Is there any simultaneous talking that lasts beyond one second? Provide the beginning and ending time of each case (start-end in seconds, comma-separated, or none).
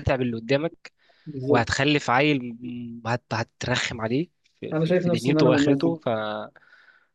4.7-6.0